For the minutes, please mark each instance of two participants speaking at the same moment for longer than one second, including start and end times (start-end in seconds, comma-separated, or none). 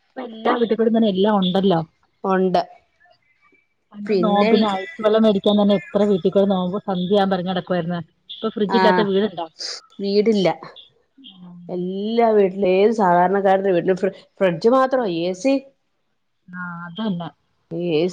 none